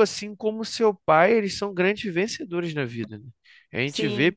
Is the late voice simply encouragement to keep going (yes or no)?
yes